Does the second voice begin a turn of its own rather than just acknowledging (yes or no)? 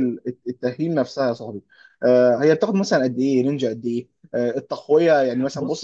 no